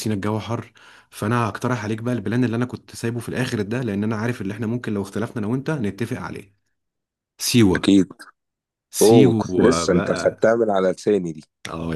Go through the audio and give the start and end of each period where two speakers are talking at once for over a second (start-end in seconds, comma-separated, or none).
9.0-10.5